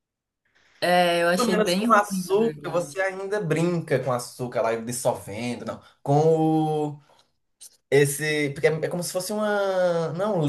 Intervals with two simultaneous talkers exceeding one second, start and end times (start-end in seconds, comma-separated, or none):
1.4-3.0